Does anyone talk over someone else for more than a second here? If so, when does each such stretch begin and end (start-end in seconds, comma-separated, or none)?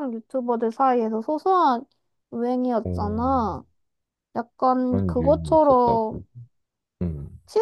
4.9-6.2